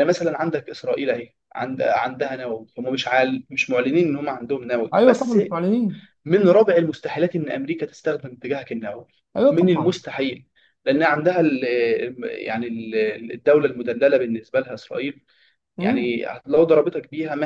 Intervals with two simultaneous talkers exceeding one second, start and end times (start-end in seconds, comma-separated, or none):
none